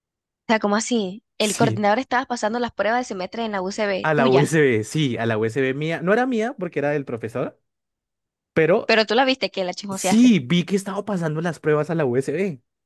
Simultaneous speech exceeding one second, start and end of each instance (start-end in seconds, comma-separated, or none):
none